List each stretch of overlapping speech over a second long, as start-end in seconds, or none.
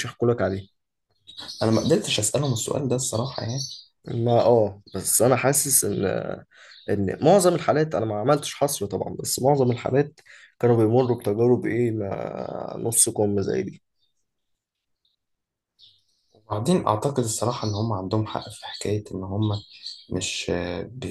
none